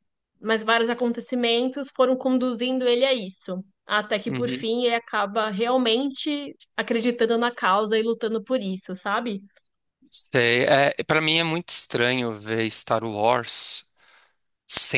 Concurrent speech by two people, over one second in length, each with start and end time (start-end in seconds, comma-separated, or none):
none